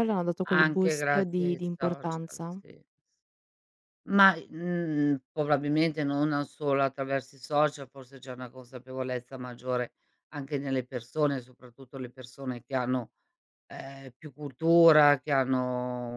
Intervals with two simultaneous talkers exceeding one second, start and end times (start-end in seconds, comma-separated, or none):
0.5-2.6